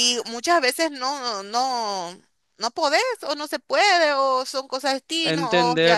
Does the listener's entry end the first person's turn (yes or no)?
yes